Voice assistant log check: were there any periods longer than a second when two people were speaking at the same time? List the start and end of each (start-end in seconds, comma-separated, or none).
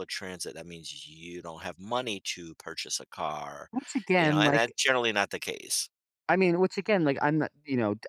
none